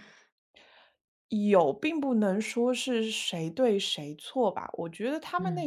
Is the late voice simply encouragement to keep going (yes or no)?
yes